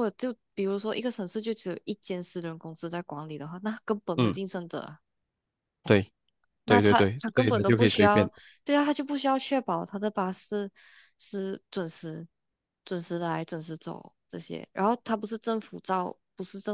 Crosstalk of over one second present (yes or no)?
yes